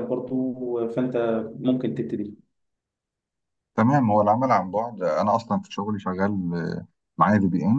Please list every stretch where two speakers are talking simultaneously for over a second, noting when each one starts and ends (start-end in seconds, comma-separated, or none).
none